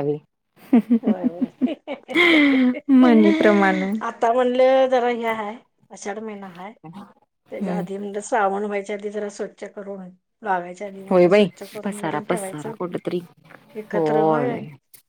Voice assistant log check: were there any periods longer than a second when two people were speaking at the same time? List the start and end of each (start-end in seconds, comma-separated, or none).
11.1-12.7